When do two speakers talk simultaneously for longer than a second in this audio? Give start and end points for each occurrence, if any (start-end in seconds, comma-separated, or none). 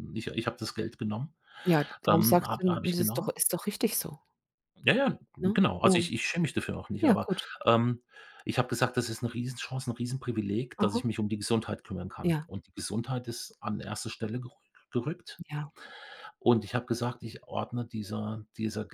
2.1-3.3